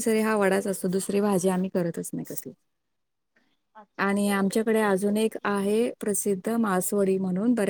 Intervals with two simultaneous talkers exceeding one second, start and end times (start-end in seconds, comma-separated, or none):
4.0-5.5